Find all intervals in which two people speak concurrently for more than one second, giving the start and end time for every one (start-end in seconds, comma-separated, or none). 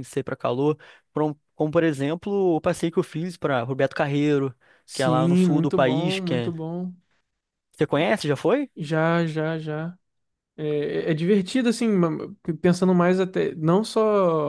4.9-6.5